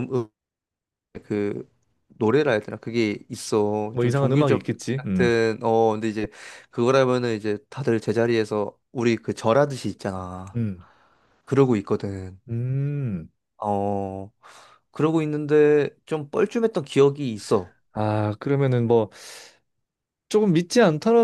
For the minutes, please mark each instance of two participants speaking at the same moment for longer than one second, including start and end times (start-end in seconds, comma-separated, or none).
3.9-5.3